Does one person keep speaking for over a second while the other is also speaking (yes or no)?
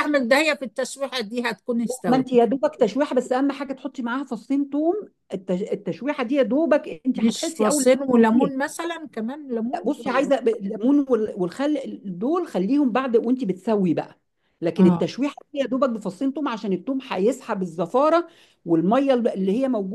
yes